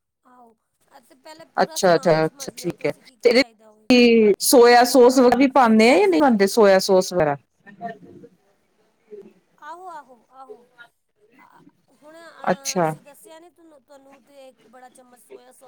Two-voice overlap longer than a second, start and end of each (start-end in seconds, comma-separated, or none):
1.6-3.4